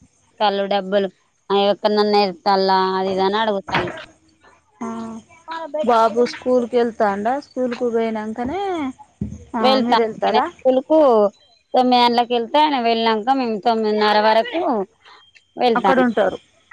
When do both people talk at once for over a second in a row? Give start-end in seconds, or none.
none